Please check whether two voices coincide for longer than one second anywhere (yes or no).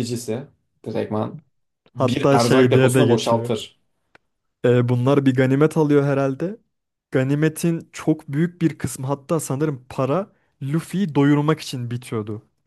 yes